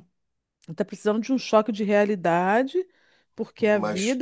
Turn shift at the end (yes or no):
no